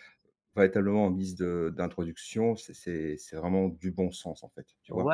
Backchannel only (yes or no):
no